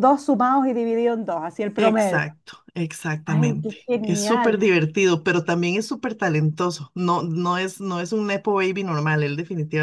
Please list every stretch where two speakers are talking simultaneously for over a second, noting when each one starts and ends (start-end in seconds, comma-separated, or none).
3.3-4.6